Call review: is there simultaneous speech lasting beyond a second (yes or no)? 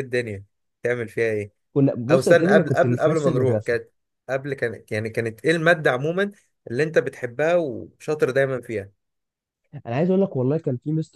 yes